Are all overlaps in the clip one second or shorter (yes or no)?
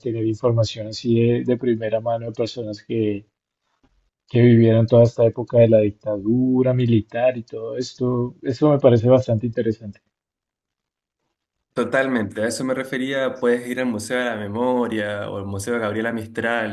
yes